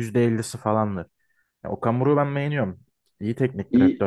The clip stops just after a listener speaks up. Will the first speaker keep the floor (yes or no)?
no